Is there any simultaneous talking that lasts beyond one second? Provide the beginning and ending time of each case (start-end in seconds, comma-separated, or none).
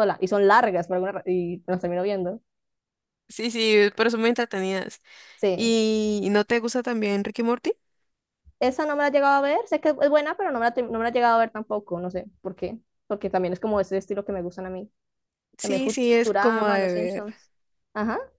15.6-17.2